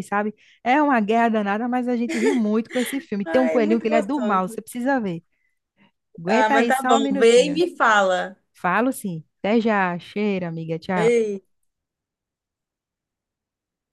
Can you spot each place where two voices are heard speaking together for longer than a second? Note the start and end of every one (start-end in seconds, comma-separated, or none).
3.2-4.6, 6.3-7.6